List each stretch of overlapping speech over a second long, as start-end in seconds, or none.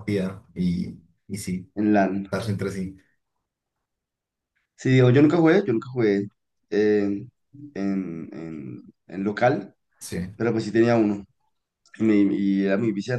none